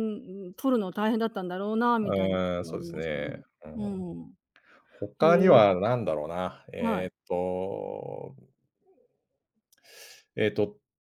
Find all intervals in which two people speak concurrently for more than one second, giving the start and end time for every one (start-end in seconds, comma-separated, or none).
2.0-3.3